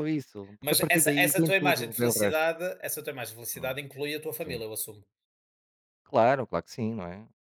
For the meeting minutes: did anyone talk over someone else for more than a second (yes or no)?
yes